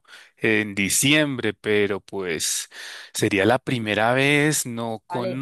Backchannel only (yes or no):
yes